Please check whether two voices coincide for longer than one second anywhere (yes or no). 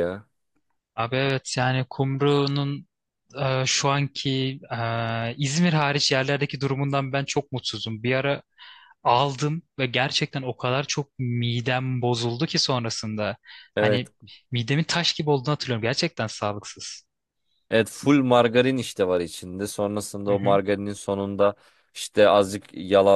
no